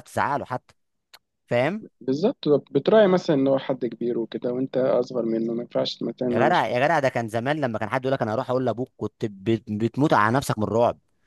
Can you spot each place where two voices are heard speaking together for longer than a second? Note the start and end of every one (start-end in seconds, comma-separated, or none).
none